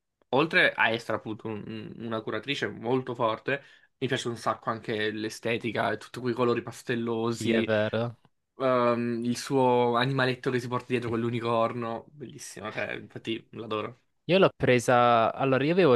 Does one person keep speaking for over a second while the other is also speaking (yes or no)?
no